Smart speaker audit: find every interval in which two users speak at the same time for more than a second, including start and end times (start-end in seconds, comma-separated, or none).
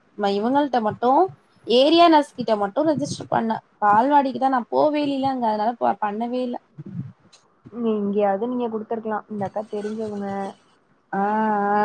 none